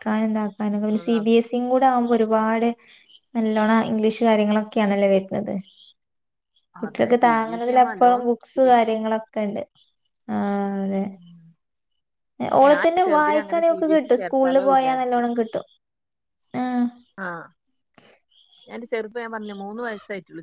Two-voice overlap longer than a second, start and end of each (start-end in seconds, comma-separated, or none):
7.3-9.0, 12.7-15.2